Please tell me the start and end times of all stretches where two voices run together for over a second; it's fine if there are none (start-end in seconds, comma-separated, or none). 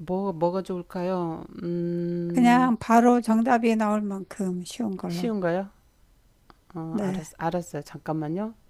none